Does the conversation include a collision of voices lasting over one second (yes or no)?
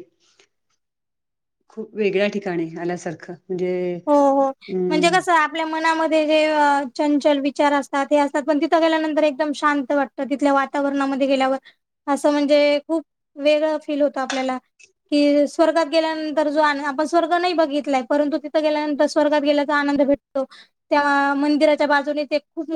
no